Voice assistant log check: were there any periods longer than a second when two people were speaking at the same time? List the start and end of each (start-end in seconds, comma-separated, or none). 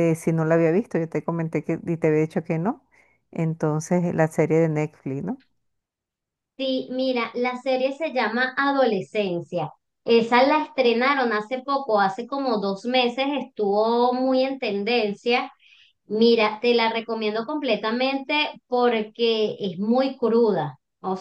none